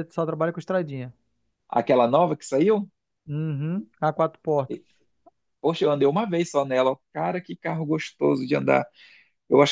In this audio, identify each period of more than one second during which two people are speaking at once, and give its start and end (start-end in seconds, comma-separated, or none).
none